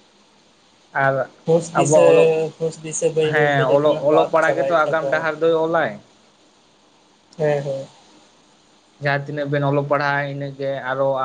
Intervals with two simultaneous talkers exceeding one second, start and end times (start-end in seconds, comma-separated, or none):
3.3-5.2